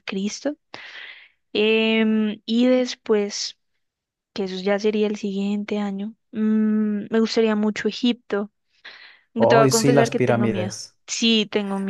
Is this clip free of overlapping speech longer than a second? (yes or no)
no